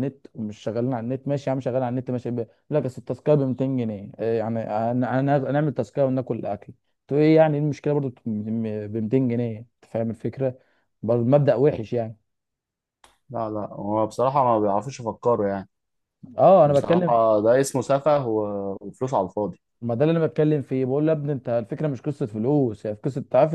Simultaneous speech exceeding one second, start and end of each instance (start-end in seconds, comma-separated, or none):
none